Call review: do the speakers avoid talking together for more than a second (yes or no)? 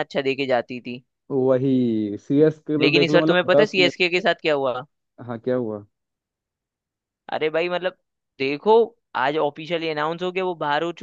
no